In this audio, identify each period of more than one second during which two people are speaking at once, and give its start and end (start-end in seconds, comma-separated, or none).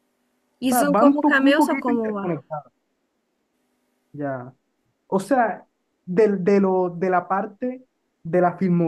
0.7-2.4